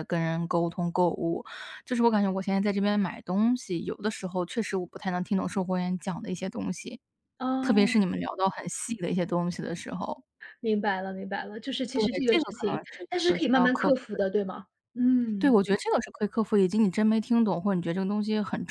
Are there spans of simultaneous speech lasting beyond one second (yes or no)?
yes